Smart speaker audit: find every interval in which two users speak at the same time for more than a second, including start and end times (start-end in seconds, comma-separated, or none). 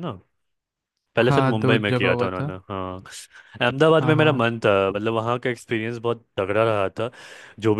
1.2-2.5